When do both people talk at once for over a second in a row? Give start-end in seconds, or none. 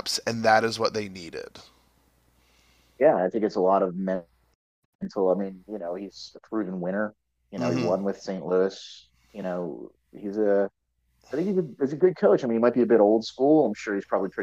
none